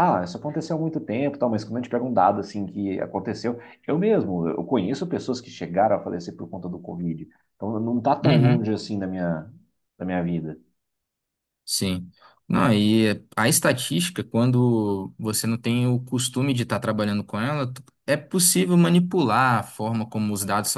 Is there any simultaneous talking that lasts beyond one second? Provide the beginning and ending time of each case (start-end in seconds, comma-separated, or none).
none